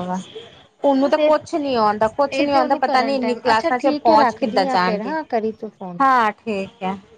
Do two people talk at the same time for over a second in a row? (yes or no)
yes